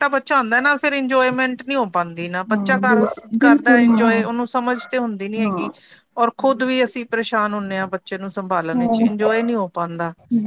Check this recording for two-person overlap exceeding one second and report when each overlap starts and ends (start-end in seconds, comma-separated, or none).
2.5-4.2